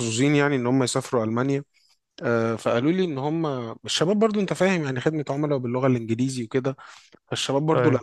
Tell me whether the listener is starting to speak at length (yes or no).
no